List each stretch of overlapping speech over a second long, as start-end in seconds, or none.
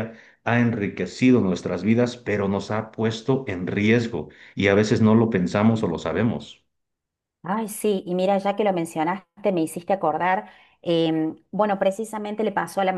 none